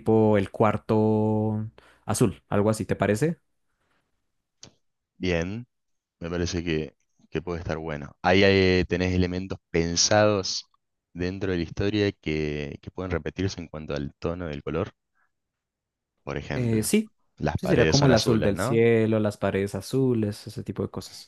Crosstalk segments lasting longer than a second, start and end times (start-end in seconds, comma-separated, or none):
17.6-18.8